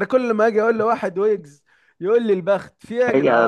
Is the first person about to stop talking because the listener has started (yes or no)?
yes